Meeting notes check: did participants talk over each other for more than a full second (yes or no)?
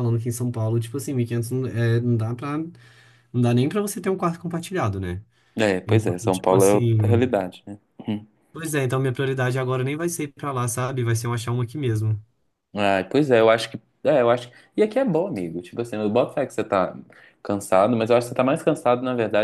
yes